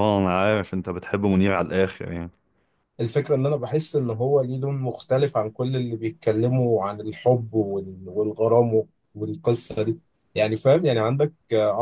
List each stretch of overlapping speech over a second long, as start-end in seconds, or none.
none